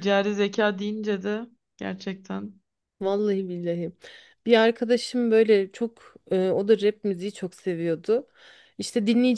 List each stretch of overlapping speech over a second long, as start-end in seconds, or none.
none